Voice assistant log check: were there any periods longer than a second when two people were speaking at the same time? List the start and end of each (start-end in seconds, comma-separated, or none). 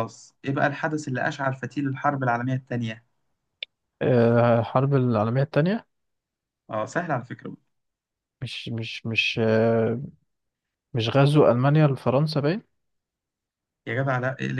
none